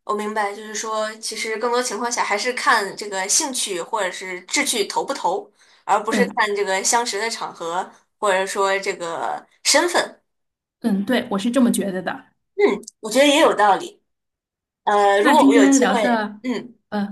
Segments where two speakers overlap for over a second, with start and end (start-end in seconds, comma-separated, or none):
15.2-16.4